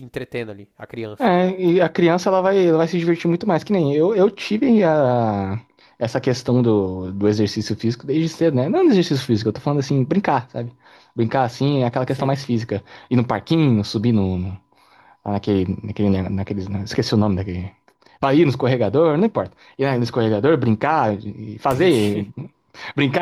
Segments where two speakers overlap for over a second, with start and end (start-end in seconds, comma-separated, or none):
none